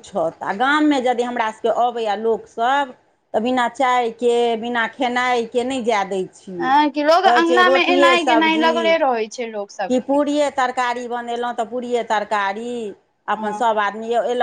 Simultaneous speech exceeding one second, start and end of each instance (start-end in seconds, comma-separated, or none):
7.3-8.8